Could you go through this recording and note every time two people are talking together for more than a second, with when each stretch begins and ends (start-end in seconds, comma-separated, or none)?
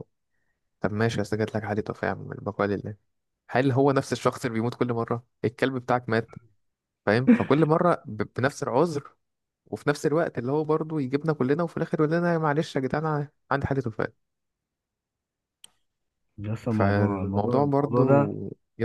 16.7-18.3